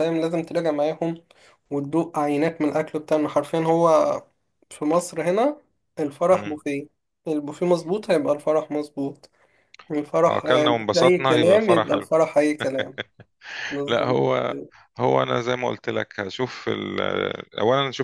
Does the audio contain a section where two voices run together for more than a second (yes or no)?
yes